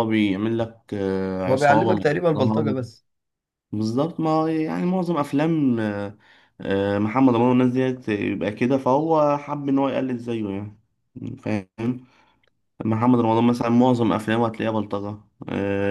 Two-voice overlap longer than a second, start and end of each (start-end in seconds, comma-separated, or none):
1.5-2.8